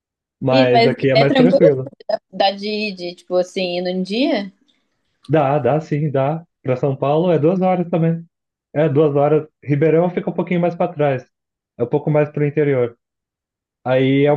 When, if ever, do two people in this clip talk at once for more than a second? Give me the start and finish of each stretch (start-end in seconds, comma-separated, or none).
0.5-1.8